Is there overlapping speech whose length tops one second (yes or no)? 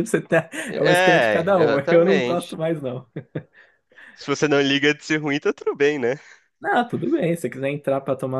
yes